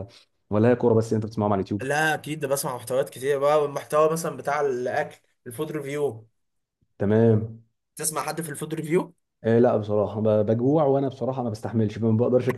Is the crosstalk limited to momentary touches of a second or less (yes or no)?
yes